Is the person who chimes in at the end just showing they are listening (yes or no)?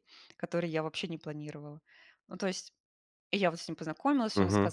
yes